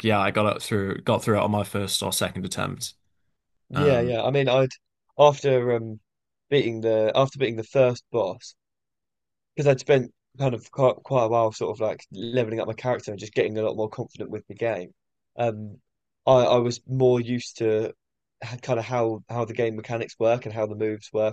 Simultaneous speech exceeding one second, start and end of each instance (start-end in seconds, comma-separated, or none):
none